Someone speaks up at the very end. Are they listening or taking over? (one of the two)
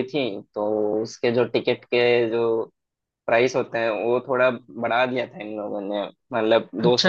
listening